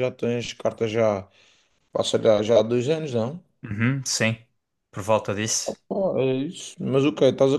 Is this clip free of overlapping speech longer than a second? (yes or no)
yes